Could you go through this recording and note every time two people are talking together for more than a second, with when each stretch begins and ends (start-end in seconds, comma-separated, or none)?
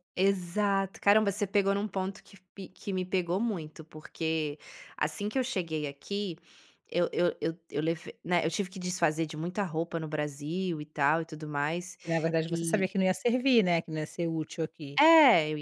none